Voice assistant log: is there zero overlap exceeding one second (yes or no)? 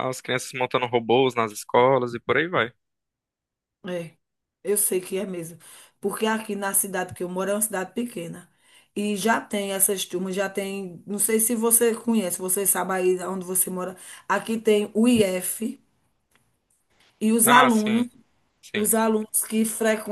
yes